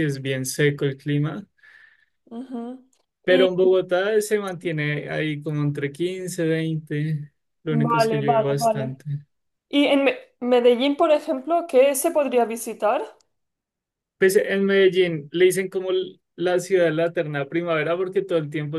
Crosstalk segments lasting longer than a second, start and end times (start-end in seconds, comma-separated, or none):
7.7-9.0